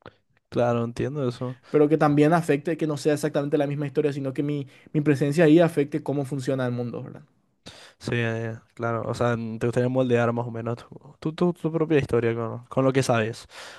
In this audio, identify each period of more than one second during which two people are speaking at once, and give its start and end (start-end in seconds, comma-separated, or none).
none